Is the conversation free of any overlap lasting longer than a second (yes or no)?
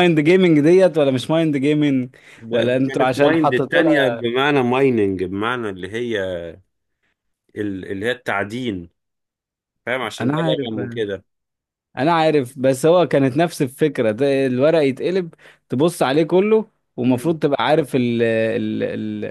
no